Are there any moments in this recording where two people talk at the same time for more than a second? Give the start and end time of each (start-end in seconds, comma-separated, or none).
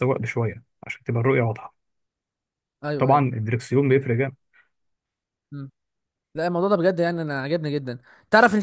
none